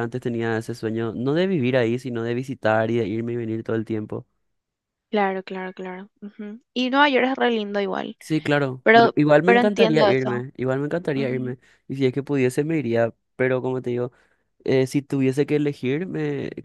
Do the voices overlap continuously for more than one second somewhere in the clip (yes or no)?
yes